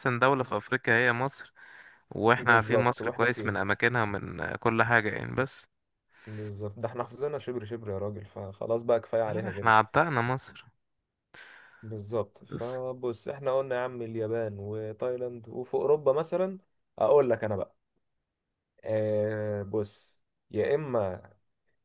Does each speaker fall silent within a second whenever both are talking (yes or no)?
no